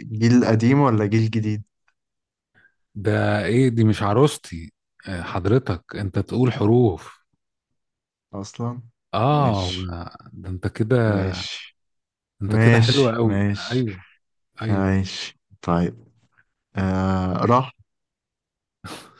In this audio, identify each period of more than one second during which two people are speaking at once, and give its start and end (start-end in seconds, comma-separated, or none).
12.5-13.8